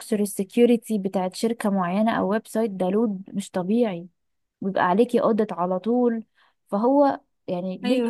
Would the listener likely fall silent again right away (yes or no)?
yes